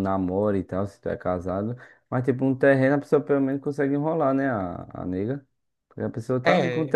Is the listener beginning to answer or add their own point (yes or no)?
no